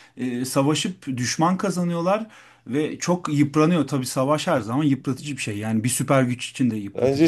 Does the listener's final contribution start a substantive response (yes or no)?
yes